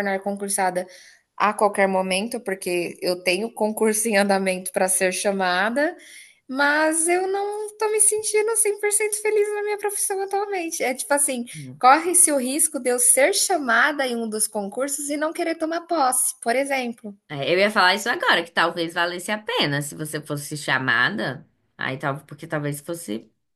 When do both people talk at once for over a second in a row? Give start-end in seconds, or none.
none